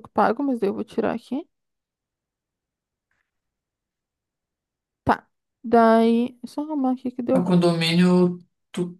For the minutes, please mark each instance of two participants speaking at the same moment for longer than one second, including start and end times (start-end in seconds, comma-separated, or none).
none